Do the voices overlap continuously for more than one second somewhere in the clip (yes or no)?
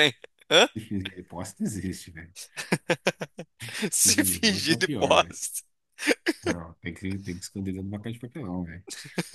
yes